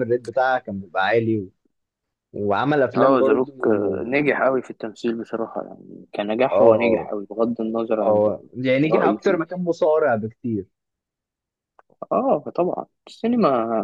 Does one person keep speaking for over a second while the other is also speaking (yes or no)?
no